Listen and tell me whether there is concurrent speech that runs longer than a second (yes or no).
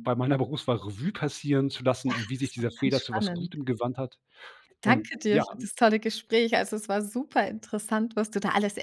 yes